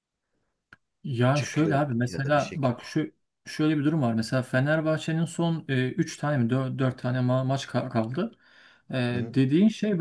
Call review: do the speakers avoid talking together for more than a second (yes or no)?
no